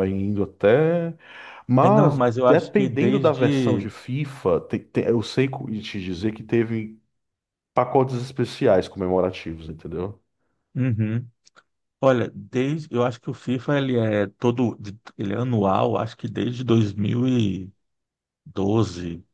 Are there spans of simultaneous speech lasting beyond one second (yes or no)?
yes